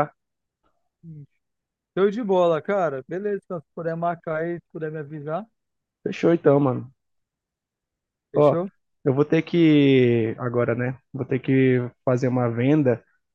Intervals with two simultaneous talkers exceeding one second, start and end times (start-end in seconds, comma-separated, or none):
none